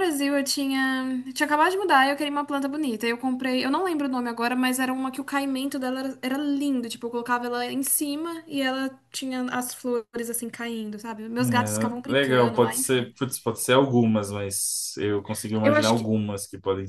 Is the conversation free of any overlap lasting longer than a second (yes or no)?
no